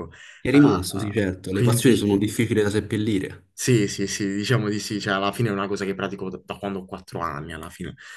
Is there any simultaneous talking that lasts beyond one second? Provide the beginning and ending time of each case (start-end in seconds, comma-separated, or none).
0.5-2.2